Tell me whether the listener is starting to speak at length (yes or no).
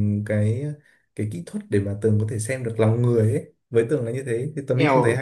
yes